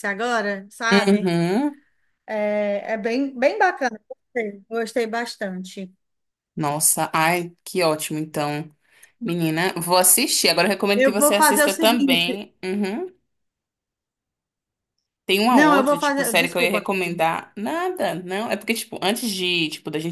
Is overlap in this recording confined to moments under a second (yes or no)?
no